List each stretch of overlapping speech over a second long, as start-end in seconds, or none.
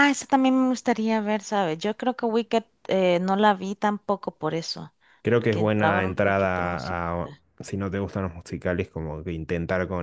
5.4-7.0